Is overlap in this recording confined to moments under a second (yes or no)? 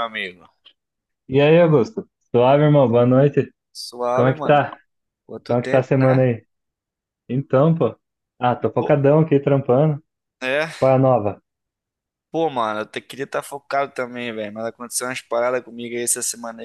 yes